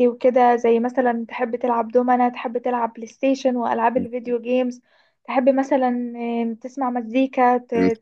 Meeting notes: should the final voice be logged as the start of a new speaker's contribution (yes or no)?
no